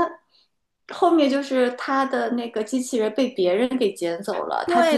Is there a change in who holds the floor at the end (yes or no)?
yes